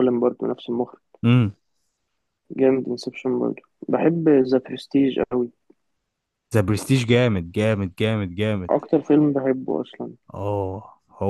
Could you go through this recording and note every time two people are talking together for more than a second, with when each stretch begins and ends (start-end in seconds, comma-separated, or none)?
none